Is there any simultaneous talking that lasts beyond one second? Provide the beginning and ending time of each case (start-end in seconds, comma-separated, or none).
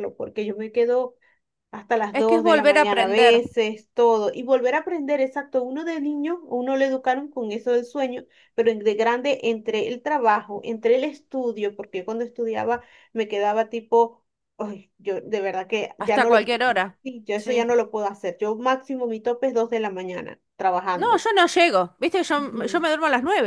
2.1-3.4